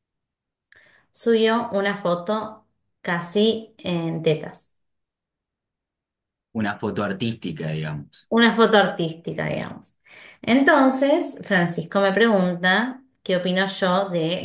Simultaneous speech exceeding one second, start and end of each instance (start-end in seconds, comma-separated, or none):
none